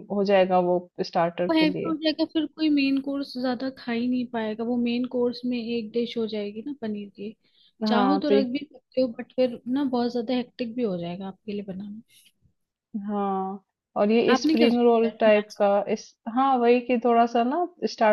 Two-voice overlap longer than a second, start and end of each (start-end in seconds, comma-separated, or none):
14.3-15.6